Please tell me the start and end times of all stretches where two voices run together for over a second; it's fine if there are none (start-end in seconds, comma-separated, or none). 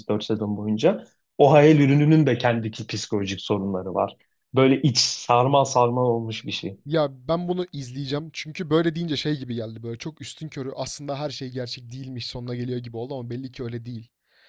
none